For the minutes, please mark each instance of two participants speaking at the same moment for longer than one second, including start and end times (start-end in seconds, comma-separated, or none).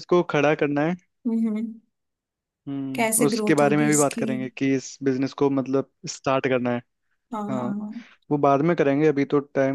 2.9-4.2